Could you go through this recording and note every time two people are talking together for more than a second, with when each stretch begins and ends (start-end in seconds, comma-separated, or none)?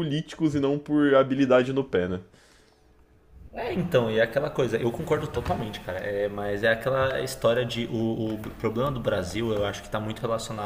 none